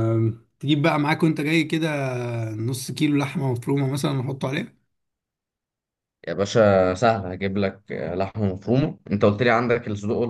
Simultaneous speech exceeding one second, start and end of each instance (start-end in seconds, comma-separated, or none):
none